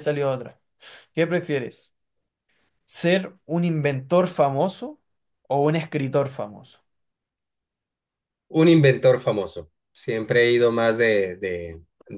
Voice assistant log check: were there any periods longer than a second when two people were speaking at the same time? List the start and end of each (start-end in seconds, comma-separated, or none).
none